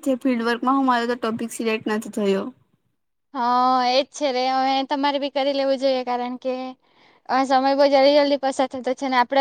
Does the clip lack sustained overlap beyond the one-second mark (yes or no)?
yes